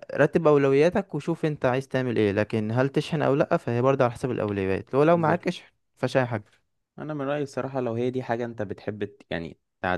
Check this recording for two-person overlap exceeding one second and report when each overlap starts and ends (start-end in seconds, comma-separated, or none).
none